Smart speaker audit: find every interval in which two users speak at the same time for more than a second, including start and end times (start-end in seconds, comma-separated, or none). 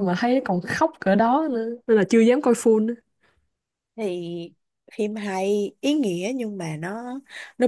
none